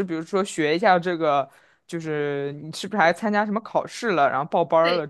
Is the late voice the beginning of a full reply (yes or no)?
yes